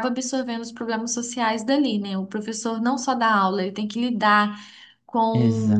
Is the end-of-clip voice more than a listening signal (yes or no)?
no